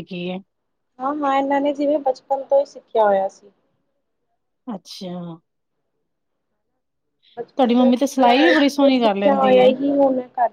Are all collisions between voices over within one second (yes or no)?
no